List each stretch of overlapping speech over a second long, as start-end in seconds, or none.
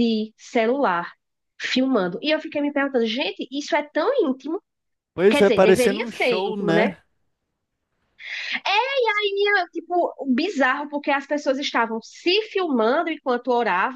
5.3-6.9